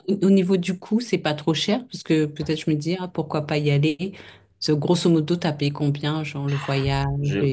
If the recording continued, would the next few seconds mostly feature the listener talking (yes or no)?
no